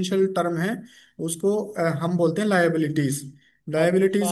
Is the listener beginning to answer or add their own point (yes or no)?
no